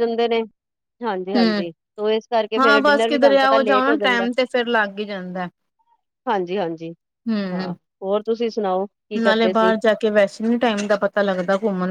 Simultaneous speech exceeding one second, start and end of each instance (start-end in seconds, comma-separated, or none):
2.6-4.3